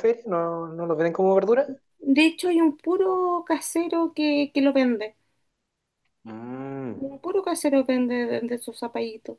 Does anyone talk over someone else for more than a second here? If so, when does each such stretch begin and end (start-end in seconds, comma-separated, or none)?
none